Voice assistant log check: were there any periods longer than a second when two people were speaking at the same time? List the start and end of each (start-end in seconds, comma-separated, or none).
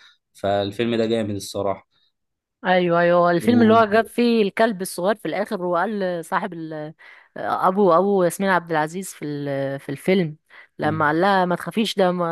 none